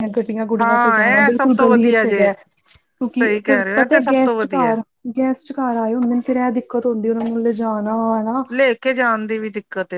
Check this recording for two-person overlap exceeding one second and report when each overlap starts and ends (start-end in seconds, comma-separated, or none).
0.6-2.3, 3.0-4.8